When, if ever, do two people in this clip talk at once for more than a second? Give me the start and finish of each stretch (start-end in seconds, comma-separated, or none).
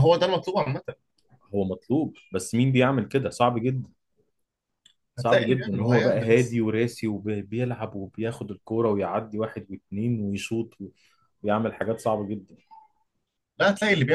5.2-6.6